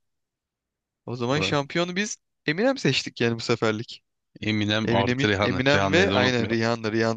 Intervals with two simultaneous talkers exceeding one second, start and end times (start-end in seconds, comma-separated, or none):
4.8-6.6